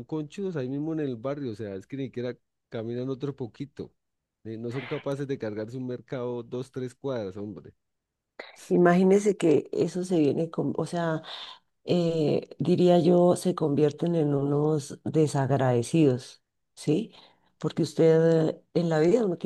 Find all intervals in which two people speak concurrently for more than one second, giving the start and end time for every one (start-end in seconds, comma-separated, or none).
none